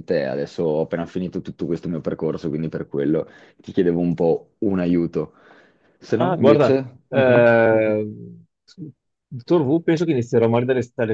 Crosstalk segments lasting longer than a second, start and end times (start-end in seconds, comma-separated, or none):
6.1-7.5